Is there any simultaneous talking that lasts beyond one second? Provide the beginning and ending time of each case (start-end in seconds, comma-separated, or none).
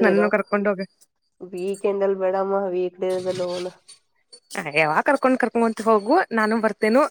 none